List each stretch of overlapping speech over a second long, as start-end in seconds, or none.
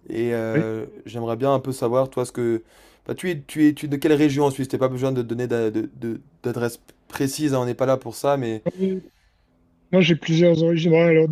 none